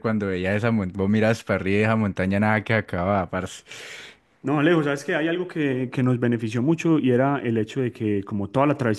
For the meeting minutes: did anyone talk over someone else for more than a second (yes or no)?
no